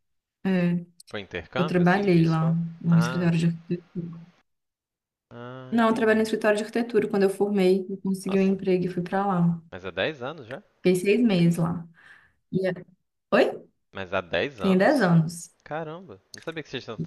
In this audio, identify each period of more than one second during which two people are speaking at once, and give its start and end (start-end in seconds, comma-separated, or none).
1.6-3.3